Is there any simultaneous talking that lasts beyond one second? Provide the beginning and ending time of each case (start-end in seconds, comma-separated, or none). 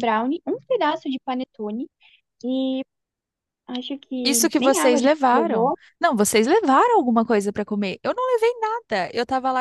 4.2-5.7